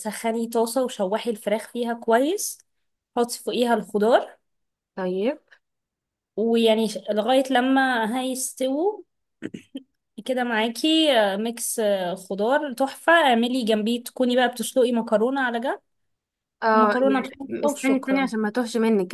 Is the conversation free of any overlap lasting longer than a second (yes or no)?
no